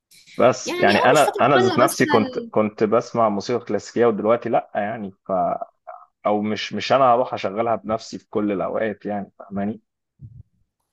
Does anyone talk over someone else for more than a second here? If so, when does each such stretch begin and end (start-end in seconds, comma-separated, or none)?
0.6-2.5